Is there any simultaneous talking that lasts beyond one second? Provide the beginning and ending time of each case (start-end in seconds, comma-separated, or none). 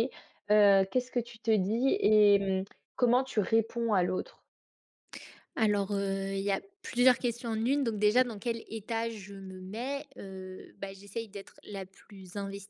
none